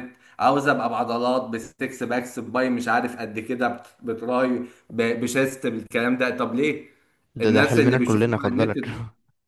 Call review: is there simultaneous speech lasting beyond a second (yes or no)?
yes